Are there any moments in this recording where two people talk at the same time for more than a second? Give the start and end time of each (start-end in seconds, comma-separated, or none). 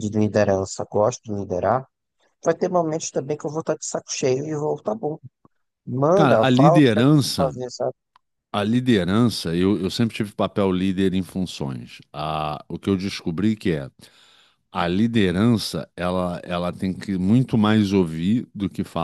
6.1-7.6